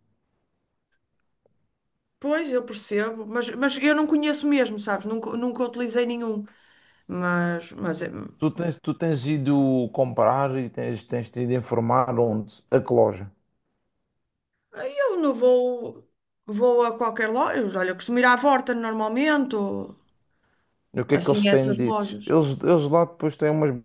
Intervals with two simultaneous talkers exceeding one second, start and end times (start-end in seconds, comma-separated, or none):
21.1-22.4